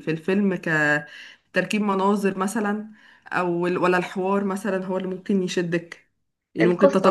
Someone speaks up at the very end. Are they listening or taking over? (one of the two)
listening